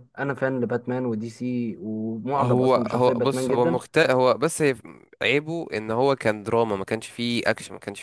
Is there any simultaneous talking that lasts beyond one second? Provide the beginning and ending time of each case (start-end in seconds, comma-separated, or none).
2.4-3.8